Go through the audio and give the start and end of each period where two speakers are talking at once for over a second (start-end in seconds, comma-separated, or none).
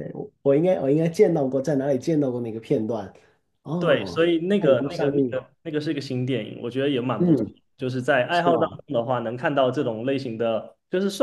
3.8-5.3